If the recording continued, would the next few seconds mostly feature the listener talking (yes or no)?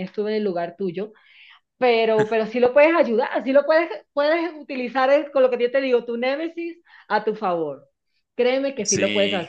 no